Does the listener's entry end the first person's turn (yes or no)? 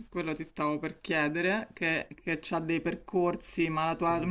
no